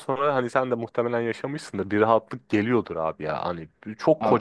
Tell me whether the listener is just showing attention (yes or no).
yes